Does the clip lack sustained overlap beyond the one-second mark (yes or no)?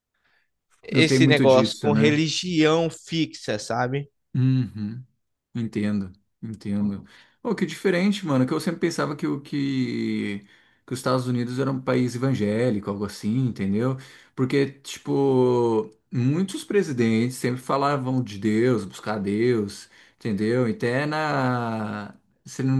no